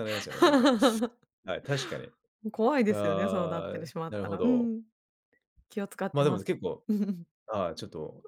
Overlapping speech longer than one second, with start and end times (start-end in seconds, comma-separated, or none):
2.9-4.7